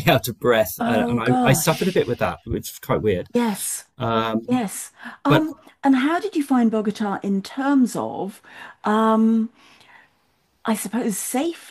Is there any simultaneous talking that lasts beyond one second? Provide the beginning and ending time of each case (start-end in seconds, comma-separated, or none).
0.8-2.3